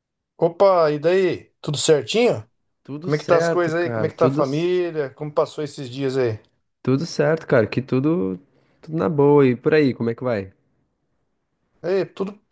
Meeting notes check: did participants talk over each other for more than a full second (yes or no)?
yes